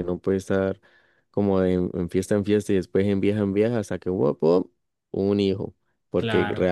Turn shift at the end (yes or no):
no